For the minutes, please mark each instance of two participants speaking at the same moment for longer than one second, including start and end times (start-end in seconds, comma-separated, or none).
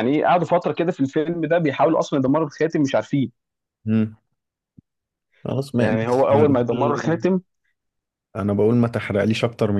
5.8-7.2